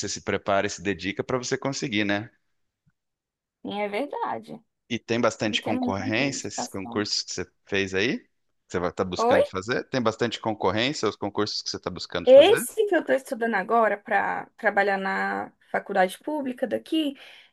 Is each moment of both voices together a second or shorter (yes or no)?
no